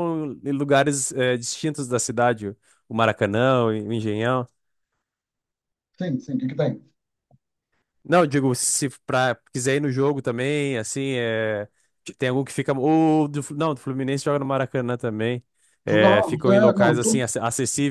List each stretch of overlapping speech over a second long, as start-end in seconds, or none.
15.9-17.1